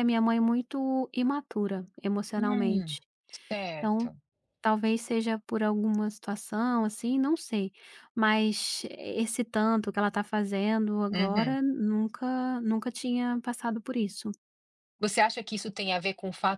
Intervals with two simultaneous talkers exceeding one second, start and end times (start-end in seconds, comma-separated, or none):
none